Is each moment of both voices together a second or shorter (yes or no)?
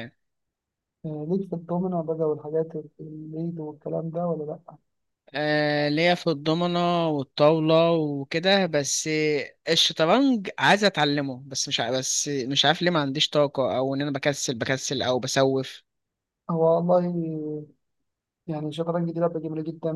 yes